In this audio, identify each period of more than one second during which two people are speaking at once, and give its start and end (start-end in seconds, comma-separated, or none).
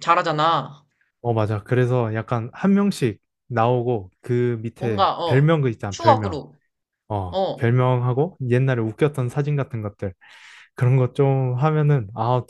4.8-6.4